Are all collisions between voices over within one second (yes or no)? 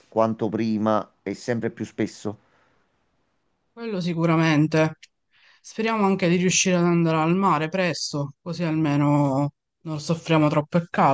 yes